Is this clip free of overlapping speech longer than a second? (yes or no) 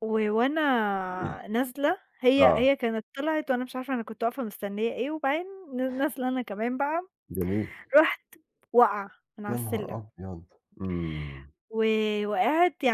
yes